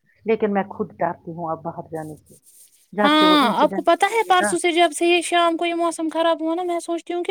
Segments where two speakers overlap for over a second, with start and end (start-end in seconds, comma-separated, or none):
3.0-4.5